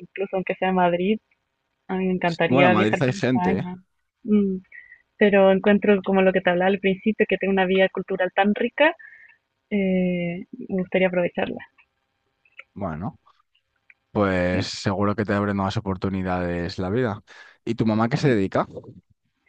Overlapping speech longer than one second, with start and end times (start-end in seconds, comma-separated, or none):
2.5-3.7